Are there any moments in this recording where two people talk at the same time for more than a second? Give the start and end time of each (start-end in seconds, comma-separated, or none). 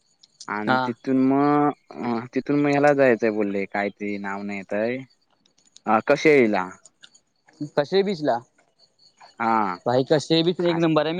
none